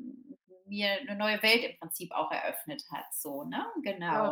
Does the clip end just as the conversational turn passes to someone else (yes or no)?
yes